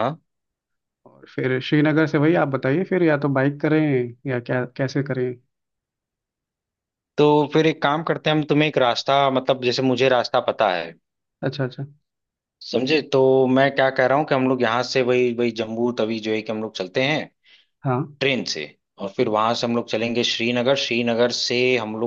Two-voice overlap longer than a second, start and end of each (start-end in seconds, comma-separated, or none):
none